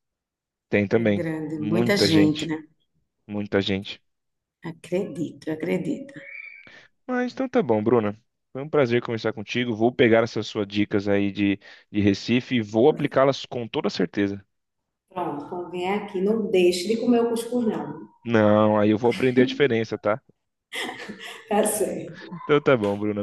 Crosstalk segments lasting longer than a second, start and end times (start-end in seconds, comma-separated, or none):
1.0-2.5